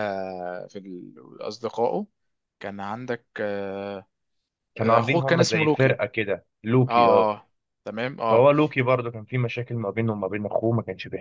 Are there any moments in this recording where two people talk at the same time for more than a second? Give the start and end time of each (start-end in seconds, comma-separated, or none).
4.8-6.0